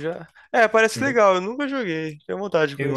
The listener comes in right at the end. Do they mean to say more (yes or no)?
yes